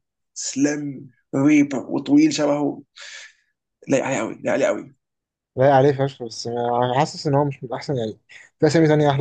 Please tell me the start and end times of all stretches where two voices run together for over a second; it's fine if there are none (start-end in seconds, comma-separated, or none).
none